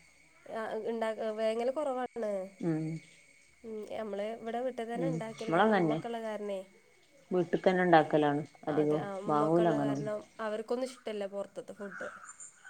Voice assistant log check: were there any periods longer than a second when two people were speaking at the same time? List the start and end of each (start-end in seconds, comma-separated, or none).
none